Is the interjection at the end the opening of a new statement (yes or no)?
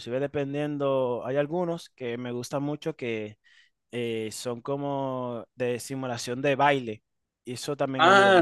yes